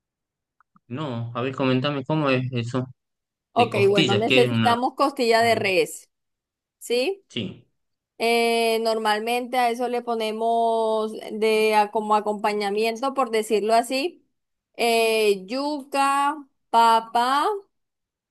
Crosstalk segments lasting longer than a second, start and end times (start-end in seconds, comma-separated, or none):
3.6-4.8